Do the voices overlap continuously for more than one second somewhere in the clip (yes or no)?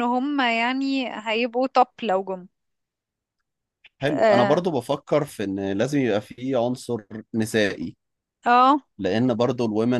no